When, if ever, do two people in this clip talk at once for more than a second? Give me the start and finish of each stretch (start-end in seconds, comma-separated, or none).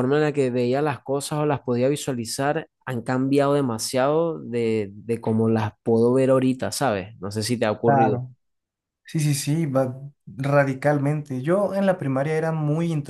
none